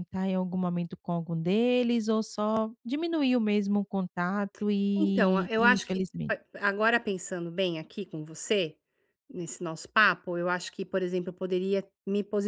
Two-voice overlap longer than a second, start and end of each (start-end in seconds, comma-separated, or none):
5.0-6.3